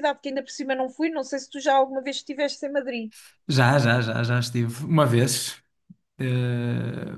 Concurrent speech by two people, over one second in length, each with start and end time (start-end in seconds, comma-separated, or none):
none